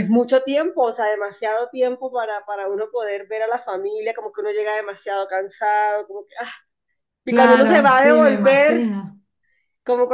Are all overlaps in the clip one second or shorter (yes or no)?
no